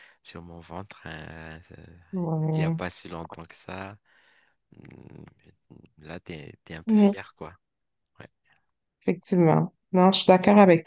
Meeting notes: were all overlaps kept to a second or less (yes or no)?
yes